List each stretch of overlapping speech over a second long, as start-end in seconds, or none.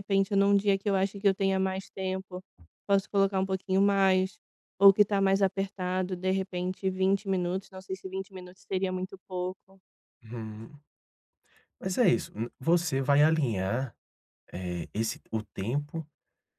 none